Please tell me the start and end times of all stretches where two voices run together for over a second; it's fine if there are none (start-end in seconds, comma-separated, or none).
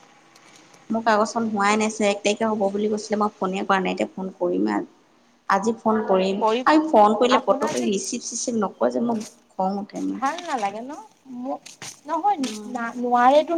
none